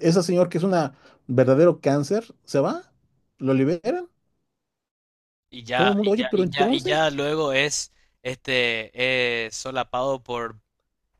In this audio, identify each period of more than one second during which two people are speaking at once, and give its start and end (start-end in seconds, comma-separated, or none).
5.7-7.0